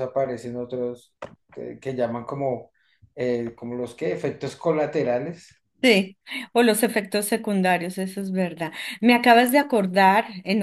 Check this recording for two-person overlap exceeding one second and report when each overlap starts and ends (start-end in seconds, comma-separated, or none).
none